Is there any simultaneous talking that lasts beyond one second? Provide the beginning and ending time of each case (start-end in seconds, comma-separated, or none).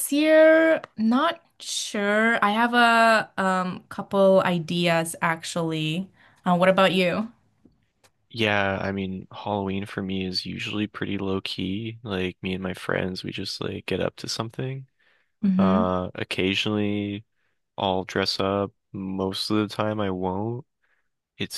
none